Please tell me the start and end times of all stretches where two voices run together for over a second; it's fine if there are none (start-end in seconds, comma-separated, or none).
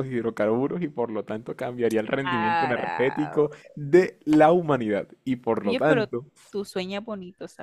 2.2-3.5